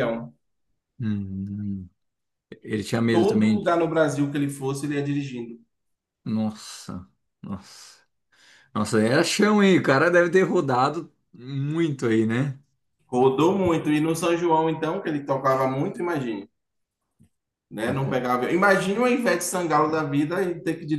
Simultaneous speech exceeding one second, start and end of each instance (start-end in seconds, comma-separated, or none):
none